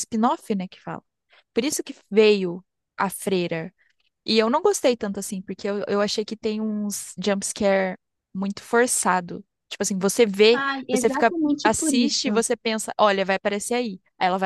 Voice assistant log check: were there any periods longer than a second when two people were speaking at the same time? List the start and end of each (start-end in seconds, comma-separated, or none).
10.5-12.4